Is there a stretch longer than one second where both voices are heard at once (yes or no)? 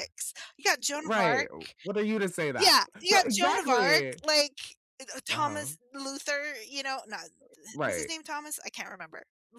yes